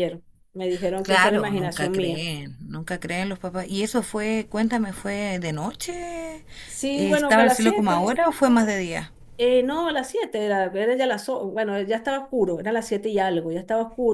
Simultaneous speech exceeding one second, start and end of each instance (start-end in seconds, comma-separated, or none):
1.0-2.2, 6.9-8.2